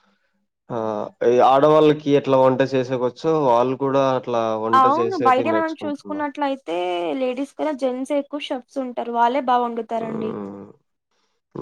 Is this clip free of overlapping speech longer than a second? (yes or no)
no